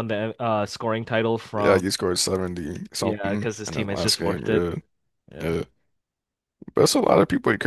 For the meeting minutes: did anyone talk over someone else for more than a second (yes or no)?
yes